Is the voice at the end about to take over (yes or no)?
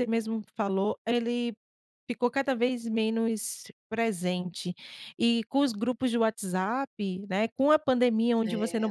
no